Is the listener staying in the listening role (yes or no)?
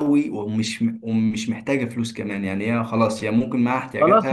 no